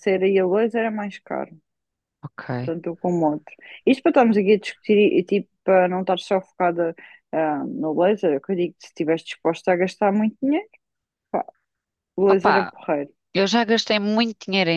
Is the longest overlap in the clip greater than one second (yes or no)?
no